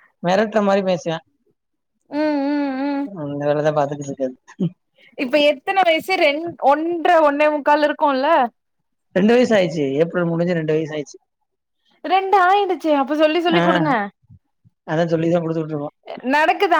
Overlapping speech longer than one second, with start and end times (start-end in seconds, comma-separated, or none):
none